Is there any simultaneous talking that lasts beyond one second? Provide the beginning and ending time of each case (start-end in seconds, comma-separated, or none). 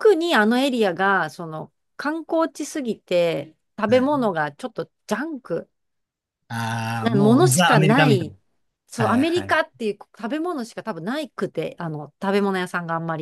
7.0-8.3